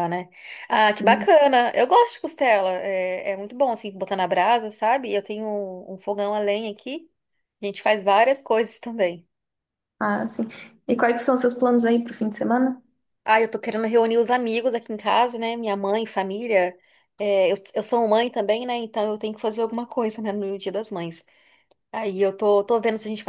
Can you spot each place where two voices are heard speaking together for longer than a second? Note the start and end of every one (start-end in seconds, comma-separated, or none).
none